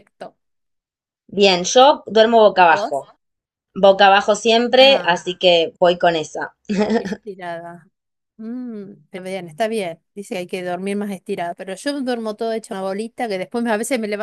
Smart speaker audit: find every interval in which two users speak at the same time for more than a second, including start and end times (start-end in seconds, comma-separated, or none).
none